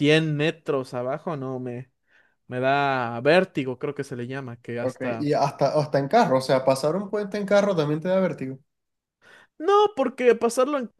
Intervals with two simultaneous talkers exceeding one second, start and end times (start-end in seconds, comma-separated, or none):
none